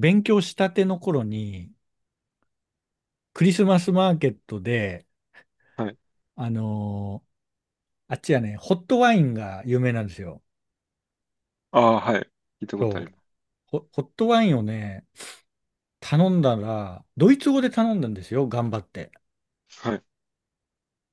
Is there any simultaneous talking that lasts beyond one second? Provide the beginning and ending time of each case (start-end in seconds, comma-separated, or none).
none